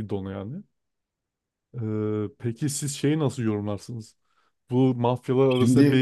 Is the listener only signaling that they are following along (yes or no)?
yes